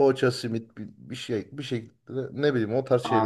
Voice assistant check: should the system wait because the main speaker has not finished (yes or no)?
no